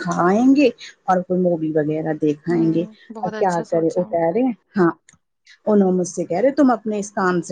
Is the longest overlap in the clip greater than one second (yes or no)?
yes